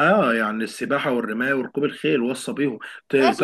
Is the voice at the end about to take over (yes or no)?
yes